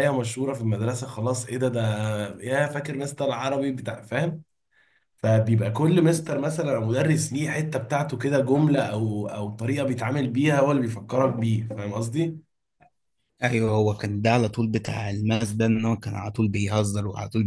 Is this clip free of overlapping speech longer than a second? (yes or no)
yes